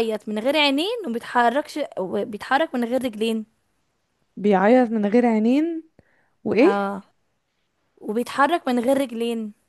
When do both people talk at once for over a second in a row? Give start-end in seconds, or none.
none